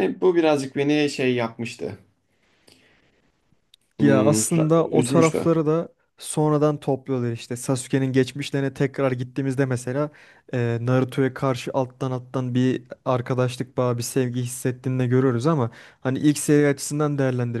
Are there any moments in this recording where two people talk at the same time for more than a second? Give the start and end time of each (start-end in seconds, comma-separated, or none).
4.0-5.5